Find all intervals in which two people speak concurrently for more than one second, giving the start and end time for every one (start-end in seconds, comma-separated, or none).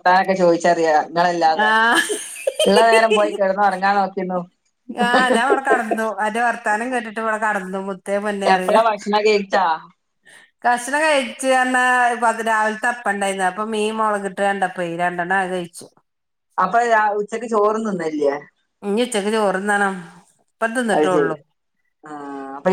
none